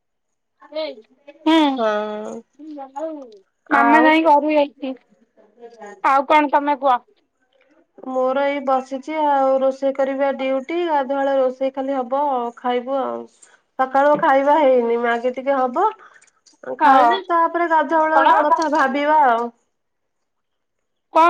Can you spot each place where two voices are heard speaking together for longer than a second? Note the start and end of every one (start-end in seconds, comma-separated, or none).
none